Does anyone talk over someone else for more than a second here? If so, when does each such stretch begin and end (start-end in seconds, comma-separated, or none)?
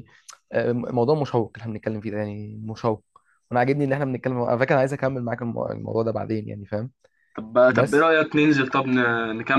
none